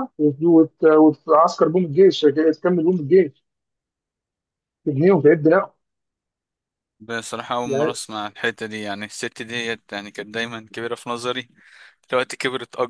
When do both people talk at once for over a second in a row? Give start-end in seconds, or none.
none